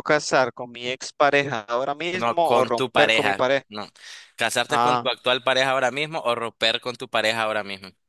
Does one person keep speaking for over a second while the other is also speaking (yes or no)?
yes